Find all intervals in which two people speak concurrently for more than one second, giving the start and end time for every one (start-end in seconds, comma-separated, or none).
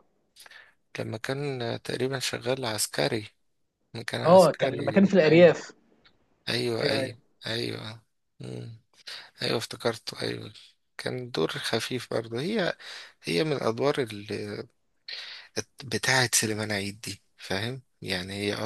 4.2-5.5